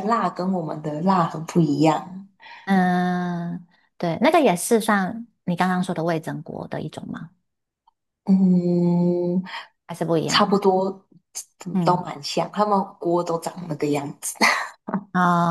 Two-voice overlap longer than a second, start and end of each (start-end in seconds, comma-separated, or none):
none